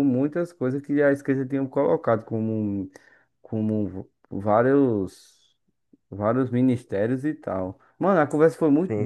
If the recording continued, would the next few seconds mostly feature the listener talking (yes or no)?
no